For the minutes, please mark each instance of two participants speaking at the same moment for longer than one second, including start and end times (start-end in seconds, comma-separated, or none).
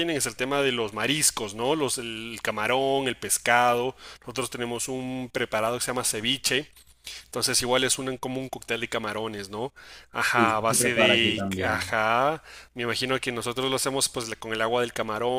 10.3-11.9